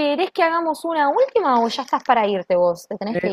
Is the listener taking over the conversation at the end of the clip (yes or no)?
yes